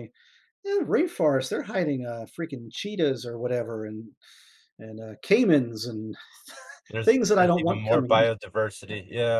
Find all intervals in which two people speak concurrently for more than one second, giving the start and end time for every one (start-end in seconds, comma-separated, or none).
7.0-8.5